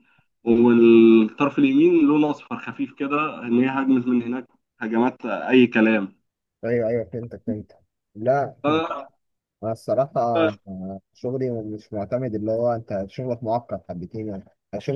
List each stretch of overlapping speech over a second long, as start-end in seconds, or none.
none